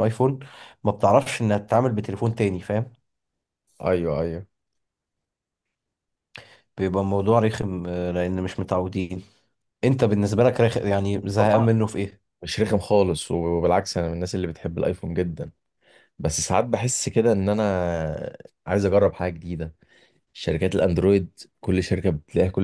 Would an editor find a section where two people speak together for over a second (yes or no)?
no